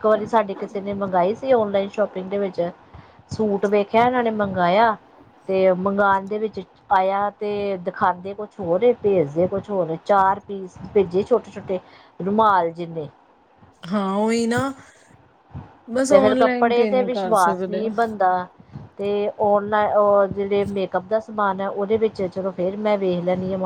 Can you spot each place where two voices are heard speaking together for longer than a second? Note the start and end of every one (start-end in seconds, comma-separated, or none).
16.1-17.8